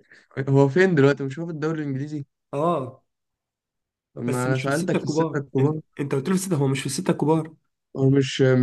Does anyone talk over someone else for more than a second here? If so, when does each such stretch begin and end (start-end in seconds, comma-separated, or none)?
4.2-5.8